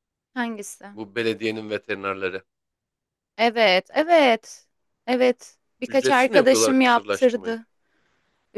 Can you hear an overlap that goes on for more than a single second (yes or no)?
yes